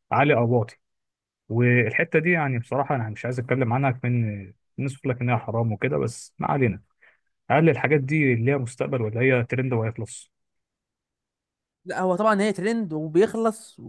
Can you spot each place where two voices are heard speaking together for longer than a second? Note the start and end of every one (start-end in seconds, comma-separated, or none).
none